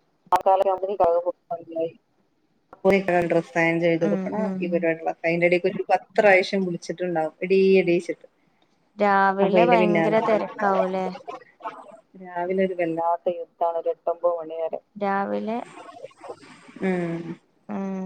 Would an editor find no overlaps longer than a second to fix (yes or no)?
yes